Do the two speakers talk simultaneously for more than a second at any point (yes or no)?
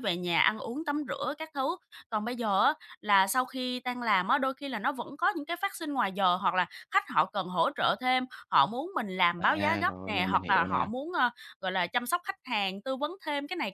yes